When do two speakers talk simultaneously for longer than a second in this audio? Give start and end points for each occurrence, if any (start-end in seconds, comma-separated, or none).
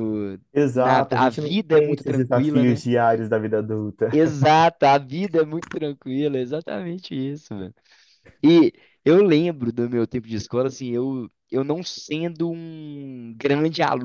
0.5-2.8